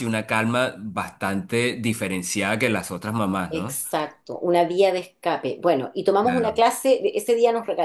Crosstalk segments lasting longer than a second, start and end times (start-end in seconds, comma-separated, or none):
none